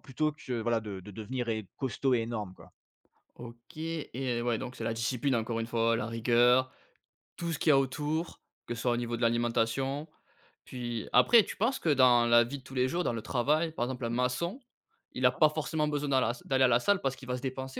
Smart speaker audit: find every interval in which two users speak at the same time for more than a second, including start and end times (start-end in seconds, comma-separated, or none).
none